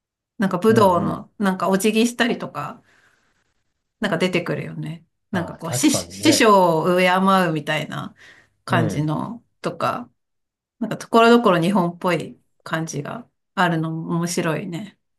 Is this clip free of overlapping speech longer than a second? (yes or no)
no